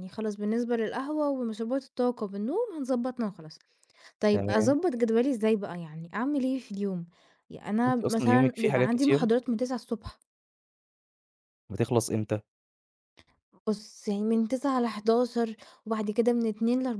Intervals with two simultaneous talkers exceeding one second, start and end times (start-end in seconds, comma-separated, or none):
7.9-9.3